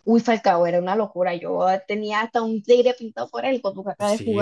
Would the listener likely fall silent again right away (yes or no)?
no